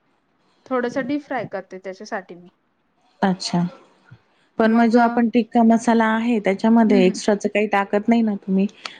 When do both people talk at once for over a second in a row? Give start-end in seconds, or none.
none